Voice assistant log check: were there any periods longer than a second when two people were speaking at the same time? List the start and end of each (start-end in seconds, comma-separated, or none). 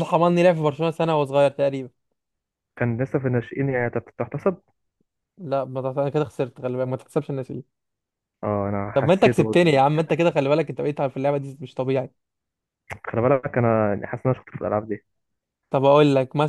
8.9-10.2